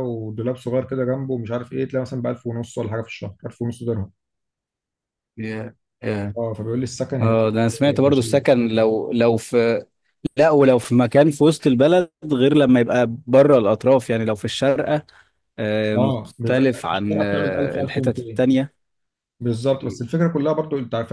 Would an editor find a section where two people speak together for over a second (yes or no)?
yes